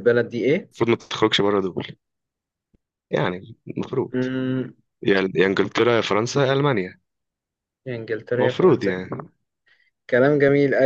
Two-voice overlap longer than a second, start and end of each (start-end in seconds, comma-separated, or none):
none